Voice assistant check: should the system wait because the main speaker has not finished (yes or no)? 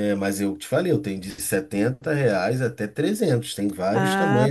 no